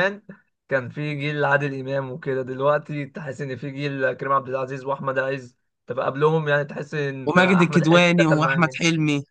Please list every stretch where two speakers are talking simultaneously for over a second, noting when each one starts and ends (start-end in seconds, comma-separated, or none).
7.3-8.8